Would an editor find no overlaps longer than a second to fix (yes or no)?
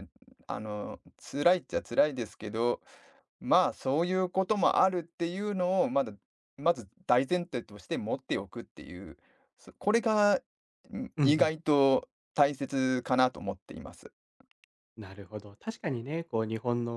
yes